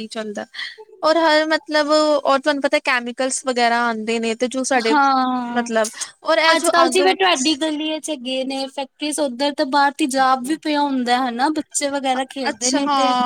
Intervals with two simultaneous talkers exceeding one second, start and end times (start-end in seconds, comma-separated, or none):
none